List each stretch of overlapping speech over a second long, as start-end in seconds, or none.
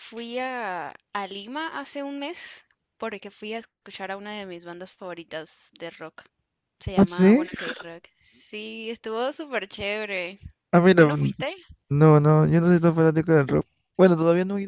none